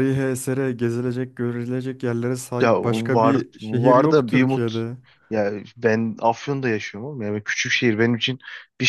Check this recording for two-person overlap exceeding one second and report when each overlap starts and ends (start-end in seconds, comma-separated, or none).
2.6-4.8